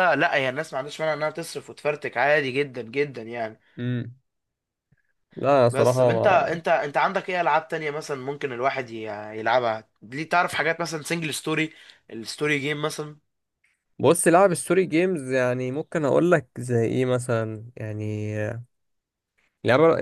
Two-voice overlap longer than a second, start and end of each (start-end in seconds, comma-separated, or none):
none